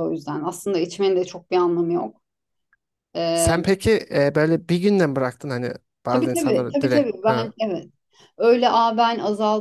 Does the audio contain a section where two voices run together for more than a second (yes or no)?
yes